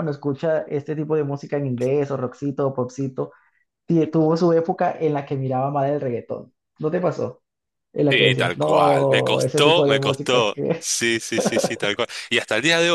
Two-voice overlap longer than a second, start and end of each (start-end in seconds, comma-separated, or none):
8.1-10.8